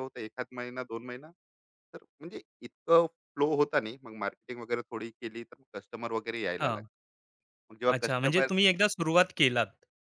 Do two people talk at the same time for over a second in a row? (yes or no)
no